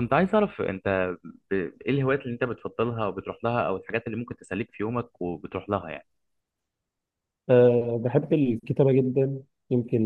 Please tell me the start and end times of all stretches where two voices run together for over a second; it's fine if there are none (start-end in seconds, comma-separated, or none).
none